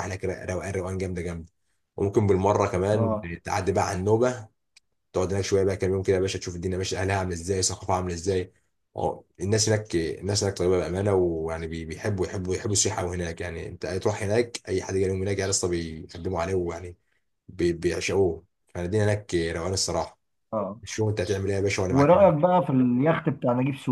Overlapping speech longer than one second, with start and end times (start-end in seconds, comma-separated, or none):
none